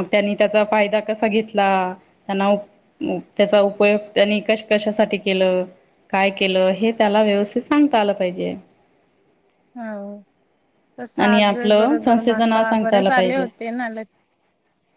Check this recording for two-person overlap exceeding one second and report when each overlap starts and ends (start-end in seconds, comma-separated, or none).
11.2-13.4